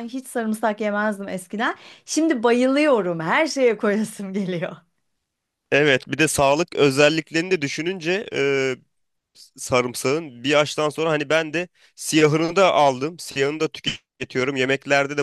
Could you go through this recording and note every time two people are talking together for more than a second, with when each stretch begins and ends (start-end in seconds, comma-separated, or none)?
none